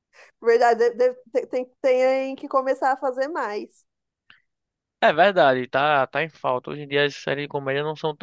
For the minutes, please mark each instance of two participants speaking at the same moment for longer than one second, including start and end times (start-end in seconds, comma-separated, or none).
none